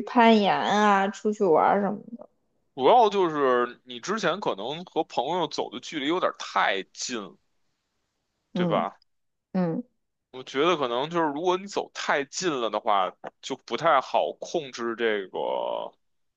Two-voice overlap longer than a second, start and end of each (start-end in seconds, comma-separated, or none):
none